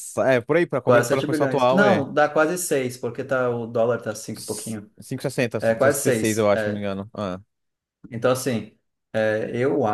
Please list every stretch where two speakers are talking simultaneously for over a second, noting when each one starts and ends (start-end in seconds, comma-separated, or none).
0.8-2.1, 5.6-6.8